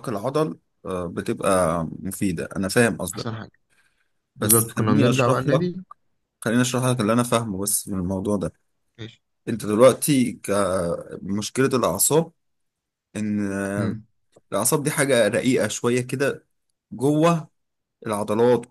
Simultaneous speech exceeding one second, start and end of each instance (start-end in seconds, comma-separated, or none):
4.4-5.6